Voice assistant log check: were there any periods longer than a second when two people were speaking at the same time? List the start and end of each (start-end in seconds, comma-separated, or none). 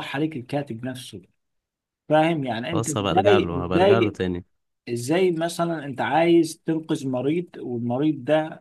2.7-4.2